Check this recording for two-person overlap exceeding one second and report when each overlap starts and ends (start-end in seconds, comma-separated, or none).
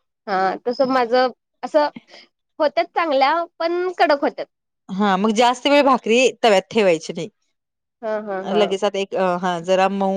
none